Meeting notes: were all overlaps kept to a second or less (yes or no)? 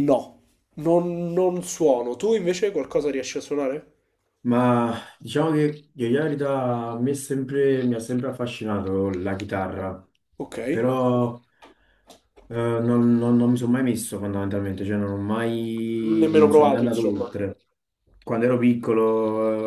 no